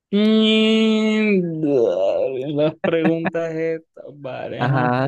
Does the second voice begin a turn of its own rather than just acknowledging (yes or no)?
yes